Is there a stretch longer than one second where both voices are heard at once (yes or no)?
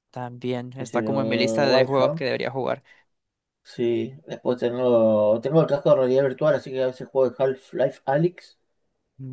yes